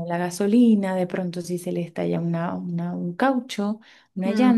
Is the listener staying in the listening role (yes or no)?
yes